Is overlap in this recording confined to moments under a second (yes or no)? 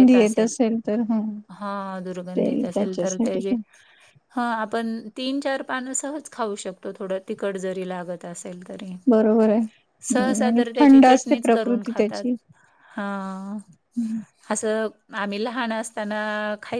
no